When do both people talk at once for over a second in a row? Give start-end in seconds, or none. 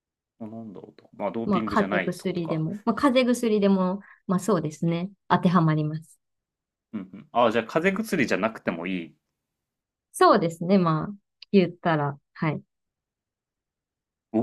1.4-2.6